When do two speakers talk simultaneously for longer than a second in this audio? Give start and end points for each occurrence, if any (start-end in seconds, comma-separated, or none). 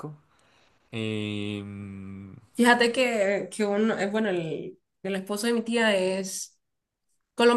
none